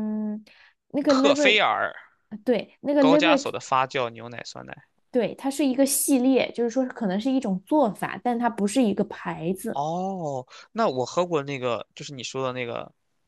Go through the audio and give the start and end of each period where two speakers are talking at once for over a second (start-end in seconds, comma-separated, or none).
none